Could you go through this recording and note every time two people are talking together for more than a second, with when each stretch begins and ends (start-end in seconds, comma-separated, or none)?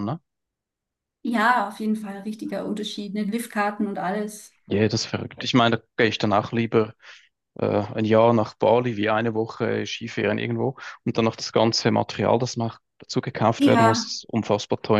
none